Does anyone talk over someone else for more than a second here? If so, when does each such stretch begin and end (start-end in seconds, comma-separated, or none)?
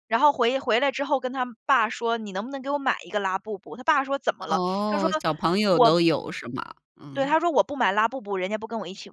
none